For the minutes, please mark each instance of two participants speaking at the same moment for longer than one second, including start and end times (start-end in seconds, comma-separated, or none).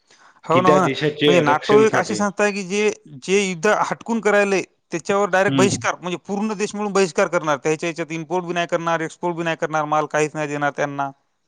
0.7-2.2